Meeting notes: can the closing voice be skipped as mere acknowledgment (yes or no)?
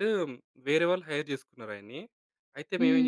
yes